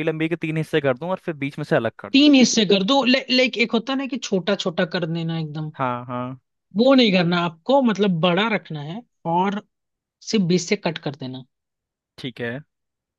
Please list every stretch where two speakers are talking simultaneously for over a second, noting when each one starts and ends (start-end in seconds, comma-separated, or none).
none